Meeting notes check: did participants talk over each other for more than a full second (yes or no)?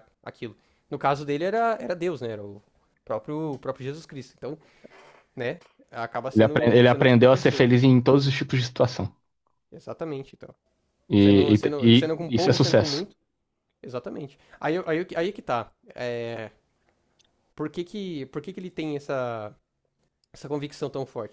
yes